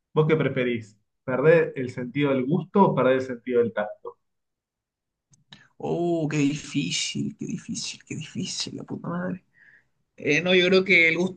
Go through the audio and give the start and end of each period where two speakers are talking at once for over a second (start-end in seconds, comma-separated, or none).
none